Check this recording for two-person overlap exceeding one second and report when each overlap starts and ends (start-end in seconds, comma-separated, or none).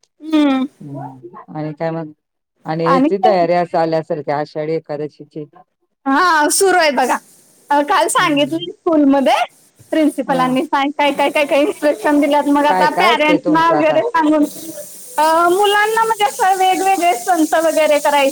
12.7-13.9